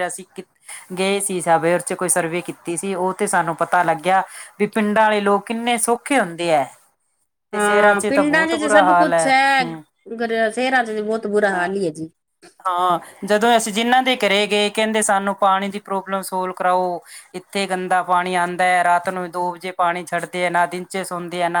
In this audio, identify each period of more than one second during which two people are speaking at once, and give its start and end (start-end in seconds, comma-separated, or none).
7.5-9.2